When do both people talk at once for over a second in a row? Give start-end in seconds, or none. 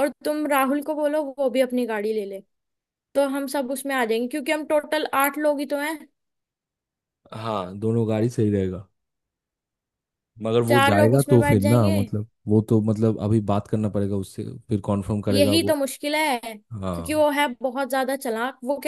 10.7-12.0